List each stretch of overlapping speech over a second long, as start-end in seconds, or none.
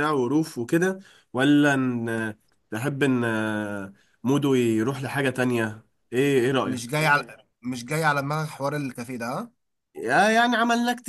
none